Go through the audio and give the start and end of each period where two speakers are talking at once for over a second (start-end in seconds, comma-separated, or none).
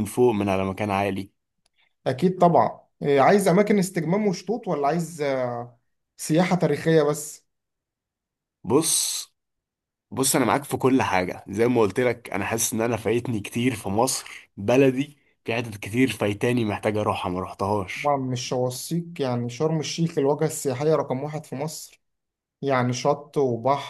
none